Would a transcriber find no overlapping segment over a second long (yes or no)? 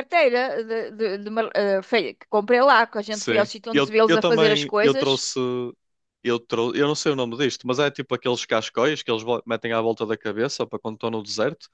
no